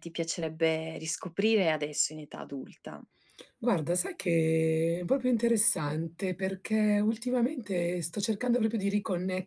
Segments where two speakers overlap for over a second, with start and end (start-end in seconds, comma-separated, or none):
none